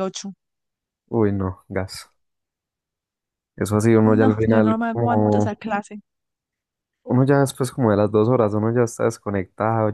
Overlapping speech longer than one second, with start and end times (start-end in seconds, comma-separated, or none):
4.1-5.6